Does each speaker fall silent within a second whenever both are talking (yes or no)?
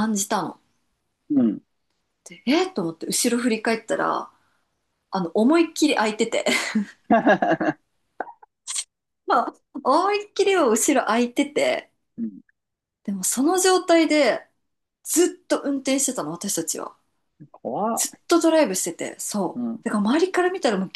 yes